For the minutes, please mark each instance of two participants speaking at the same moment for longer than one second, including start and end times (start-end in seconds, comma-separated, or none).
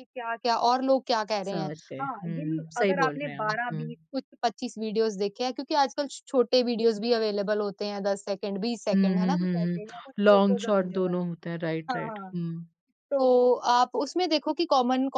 1.5-3.9, 8.9-11.2